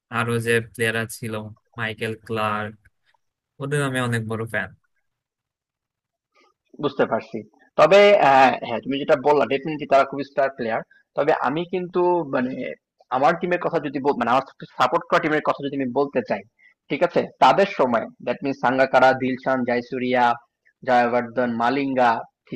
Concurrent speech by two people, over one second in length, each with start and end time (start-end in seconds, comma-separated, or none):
none